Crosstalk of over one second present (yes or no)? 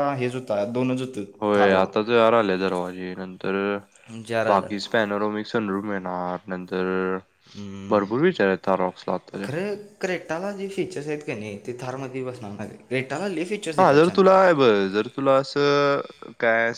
no